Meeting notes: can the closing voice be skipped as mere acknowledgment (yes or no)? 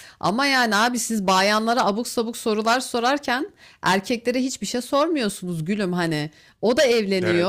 yes